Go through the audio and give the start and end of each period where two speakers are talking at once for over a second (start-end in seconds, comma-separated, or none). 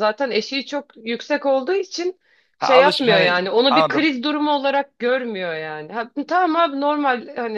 2.6-4.1